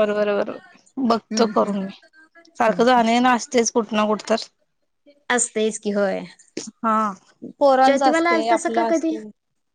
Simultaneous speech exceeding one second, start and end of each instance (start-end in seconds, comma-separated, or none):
7.8-9.2